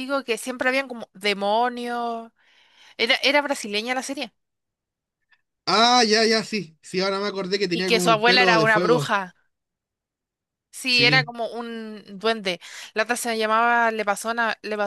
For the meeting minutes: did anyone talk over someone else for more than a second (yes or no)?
yes